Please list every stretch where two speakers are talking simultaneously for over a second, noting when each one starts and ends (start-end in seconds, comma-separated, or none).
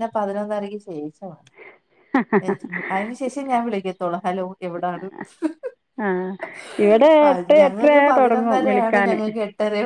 7.5-9.1